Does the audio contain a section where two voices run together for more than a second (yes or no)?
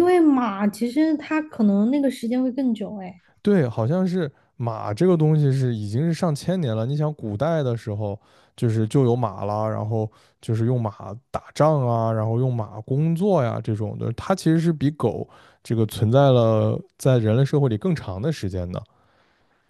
no